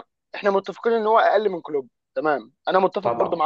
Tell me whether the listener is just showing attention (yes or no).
yes